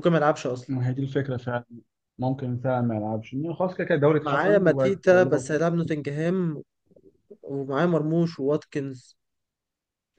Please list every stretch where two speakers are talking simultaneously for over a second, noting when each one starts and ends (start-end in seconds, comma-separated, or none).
4.2-5.6